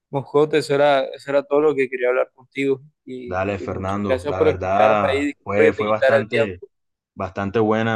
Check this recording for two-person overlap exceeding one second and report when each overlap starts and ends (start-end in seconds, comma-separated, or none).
3.2-6.5